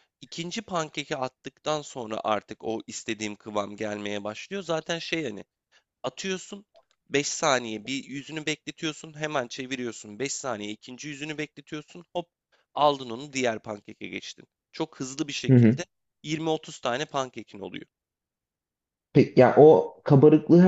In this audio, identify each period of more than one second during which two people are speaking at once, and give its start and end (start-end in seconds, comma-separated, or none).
none